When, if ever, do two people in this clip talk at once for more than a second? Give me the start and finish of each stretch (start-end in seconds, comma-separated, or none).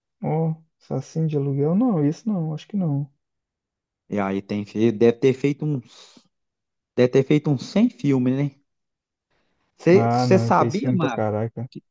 9.9-11.3